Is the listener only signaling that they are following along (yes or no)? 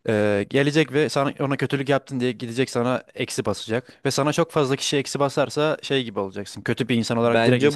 no